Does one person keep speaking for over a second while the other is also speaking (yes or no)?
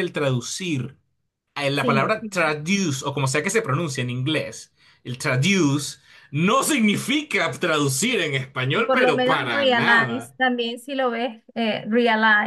yes